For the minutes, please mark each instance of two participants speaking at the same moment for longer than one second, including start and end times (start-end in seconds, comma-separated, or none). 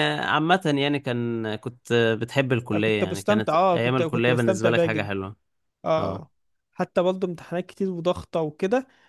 2.7-5.1